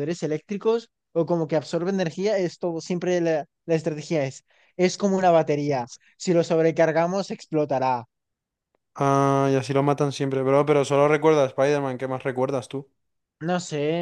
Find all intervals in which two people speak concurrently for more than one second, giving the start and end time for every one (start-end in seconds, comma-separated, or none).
none